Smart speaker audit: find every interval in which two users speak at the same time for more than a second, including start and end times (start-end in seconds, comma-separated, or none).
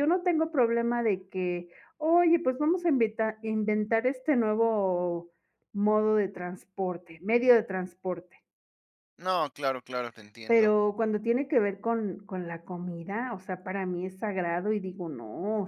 none